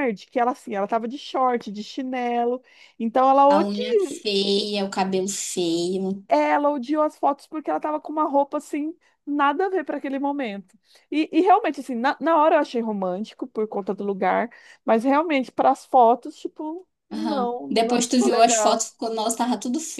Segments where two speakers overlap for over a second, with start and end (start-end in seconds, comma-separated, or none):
17.1-18.8